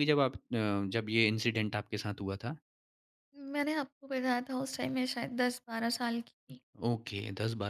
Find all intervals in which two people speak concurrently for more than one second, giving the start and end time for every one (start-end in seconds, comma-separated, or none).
none